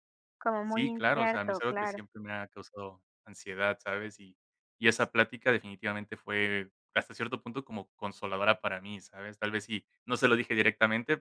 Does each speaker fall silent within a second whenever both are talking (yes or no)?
no